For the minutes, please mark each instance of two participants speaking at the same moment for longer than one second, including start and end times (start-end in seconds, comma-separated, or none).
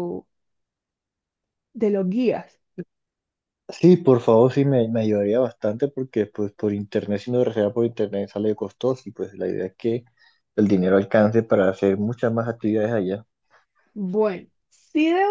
none